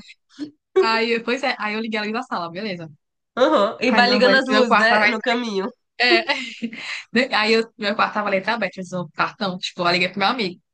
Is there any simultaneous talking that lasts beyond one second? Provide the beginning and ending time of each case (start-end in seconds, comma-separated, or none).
3.9-5.1